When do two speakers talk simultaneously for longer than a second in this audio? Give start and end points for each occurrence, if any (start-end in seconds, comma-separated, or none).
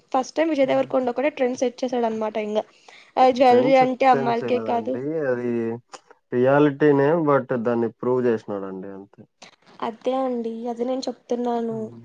3.5-4.9